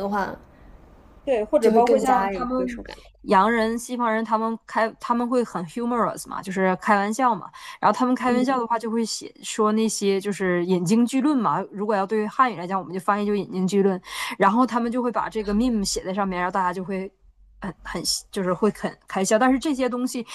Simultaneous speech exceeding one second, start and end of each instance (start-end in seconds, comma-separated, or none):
1.6-2.8